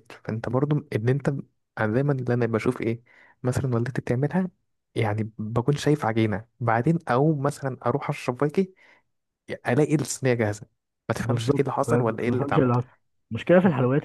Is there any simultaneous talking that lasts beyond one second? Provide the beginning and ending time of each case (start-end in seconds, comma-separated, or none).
11.2-12.7